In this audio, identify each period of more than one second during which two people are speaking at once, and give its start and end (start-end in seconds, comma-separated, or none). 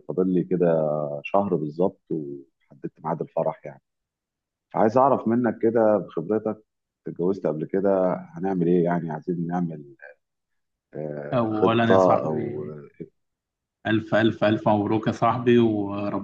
11.3-12.7